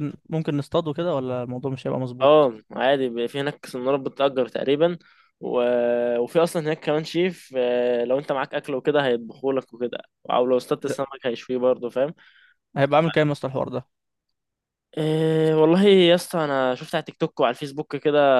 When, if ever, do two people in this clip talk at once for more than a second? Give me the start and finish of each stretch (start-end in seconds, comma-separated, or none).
none